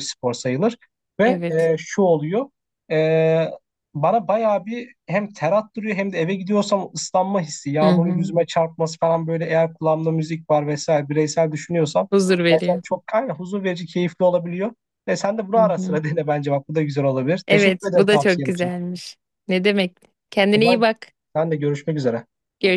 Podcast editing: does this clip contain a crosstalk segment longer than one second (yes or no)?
yes